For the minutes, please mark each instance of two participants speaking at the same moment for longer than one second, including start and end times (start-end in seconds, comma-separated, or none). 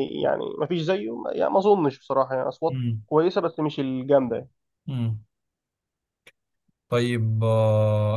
none